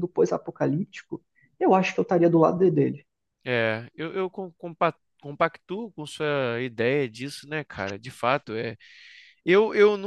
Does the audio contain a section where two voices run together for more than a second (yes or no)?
no